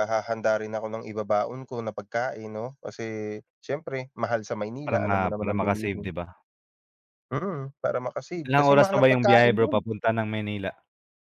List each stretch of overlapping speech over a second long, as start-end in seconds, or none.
4.9-6.1, 8.4-9.8